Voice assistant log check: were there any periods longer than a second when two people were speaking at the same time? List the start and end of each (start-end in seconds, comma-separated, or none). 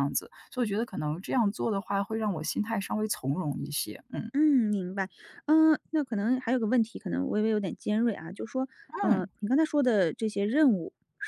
none